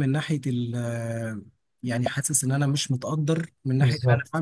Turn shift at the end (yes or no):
no